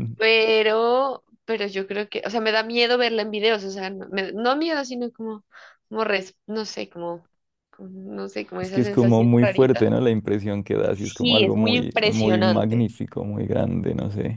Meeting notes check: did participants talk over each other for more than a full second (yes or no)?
yes